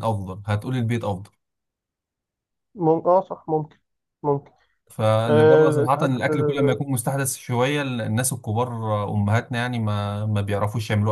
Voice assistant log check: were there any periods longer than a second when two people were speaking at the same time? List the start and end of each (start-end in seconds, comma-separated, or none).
5.3-6.8